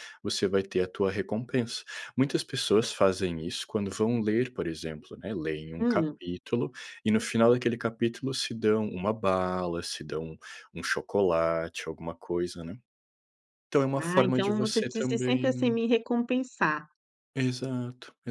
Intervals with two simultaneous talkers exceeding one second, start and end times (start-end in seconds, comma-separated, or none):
14.0-15.8